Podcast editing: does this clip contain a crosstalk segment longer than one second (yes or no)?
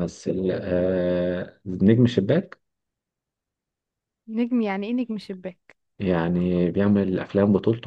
no